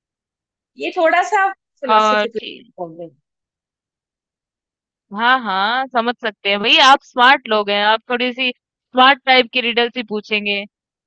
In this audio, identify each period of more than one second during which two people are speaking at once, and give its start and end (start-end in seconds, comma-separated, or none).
none